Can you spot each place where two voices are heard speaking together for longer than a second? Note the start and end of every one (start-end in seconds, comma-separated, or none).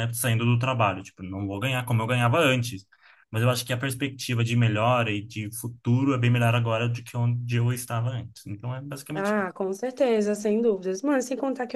none